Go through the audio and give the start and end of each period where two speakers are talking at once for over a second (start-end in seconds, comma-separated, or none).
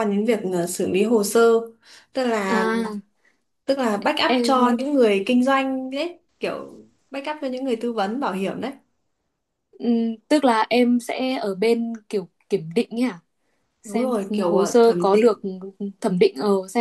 13.8-15.4